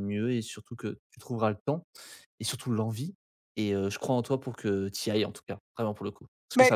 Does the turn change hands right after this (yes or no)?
no